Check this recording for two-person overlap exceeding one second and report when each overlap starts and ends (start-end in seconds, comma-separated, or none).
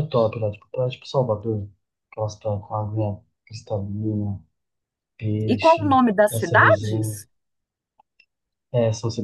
5.5-7.2